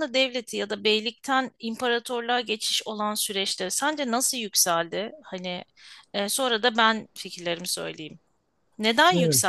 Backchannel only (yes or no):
yes